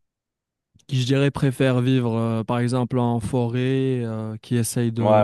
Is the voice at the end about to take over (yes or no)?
no